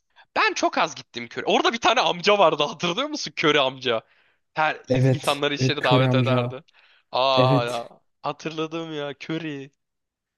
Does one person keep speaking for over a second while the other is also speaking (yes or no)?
yes